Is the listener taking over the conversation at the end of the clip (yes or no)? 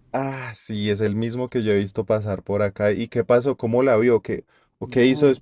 yes